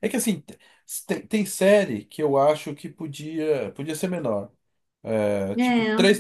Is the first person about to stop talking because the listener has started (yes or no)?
no